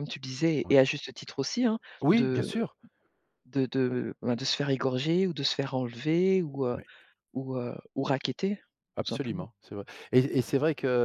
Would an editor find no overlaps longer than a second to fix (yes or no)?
yes